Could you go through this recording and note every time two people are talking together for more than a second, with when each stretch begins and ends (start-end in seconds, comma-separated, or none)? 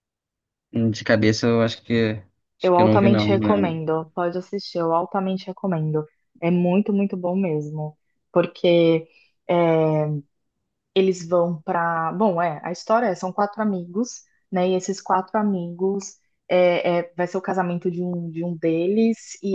2.6-3.8